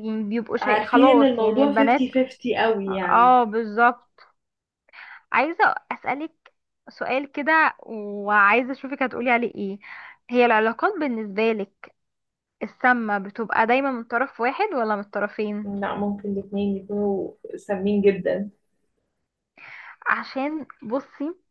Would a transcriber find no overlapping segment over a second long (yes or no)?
no